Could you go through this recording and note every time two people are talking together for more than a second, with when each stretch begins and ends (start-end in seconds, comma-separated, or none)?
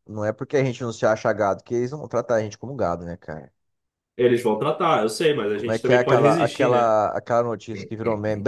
5.5-7.0